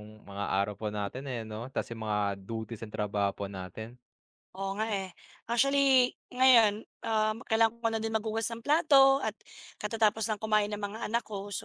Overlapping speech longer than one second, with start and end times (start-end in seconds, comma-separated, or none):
none